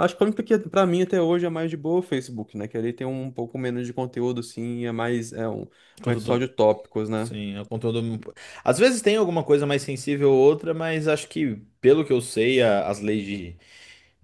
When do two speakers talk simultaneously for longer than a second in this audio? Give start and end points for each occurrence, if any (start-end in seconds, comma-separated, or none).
none